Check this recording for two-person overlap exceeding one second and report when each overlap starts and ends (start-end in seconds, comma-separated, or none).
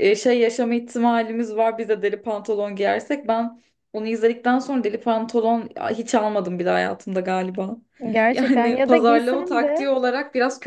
8.3-9.9